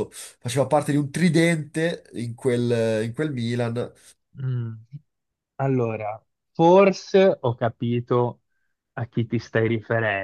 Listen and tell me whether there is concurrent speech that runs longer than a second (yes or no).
no